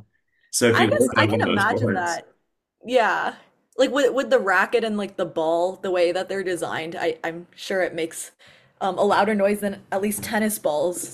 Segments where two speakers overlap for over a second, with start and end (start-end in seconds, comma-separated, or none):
0.7-2.2